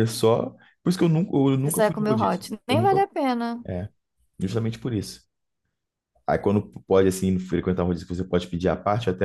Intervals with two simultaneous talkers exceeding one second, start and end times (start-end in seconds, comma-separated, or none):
1.6-3.0